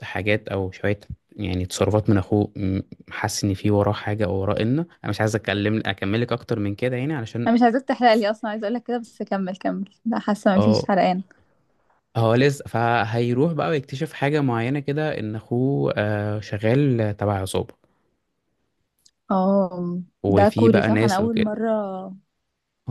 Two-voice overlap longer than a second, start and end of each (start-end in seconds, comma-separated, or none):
20.2-21.6